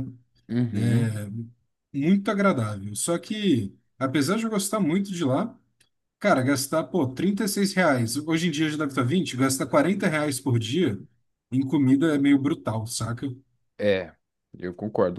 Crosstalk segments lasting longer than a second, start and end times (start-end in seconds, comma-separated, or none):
none